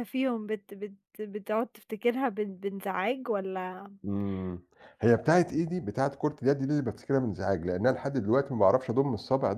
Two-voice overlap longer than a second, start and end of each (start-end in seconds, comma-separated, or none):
none